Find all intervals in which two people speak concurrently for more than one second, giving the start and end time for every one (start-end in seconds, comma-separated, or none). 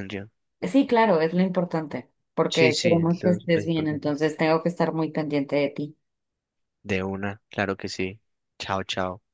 2.5-4.0